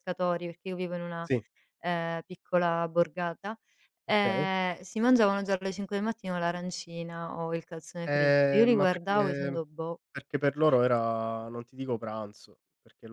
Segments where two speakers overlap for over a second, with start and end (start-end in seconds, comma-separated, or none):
8.1-9.6